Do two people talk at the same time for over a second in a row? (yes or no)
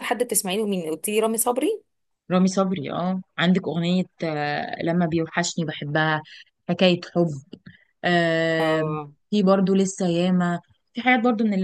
no